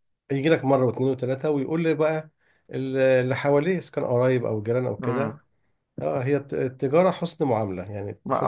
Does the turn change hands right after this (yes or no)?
yes